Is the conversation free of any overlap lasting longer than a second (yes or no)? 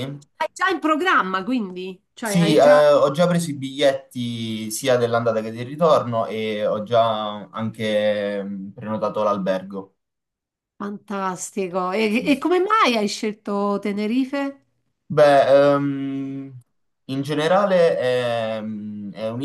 yes